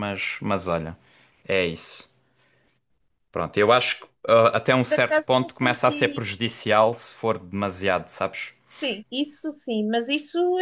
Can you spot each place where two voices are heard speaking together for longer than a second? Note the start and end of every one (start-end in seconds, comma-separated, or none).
4.9-6.2